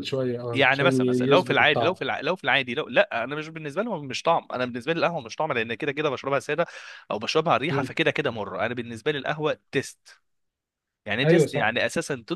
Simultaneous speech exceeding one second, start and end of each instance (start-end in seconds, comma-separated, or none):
0.5-1.9